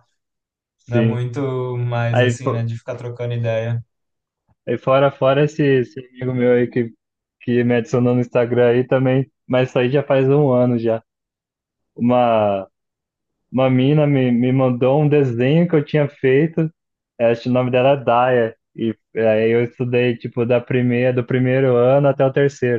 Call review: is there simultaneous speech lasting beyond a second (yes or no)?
no